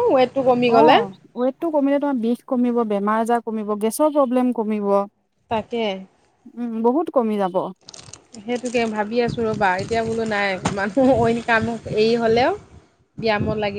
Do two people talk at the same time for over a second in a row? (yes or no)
no